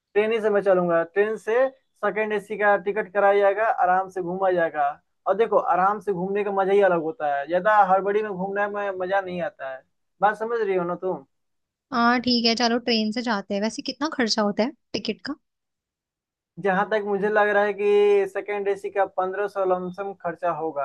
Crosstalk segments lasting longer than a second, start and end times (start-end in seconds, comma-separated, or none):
none